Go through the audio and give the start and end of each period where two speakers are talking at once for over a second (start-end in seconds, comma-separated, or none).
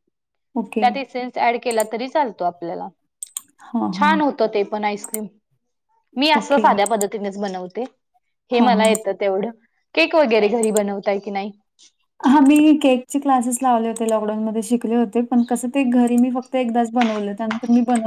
none